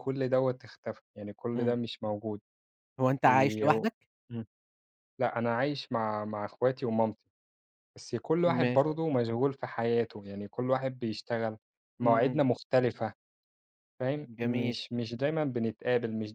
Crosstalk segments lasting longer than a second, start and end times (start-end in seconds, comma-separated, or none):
none